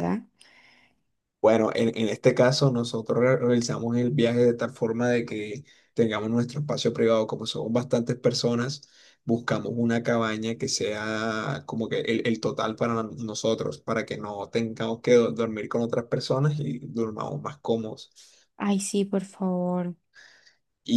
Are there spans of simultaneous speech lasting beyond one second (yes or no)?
no